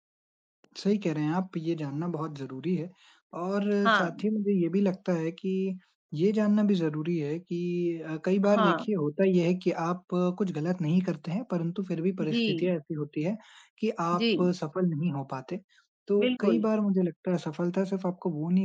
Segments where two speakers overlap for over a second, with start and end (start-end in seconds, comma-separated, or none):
none